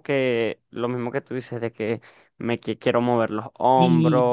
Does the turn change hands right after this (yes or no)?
no